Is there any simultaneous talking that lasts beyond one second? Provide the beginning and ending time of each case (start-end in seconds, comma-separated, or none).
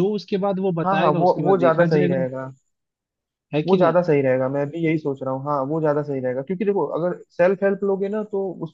0.8-2.2